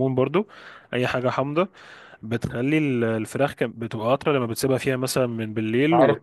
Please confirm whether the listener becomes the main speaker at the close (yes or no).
yes